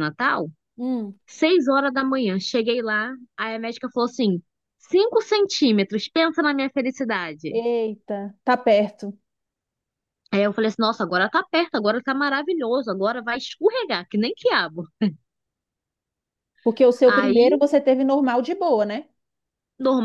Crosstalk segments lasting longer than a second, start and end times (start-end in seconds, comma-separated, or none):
none